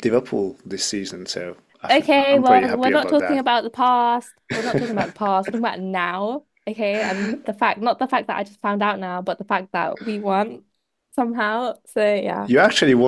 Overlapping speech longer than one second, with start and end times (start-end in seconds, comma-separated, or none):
1.9-3.4